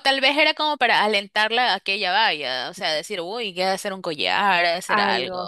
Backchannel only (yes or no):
no